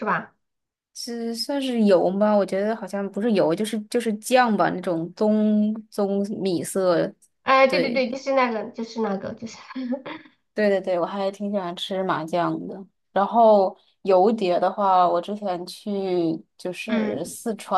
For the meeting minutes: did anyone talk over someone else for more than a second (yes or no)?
no